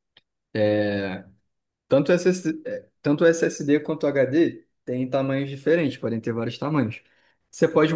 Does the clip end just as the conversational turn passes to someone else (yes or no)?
no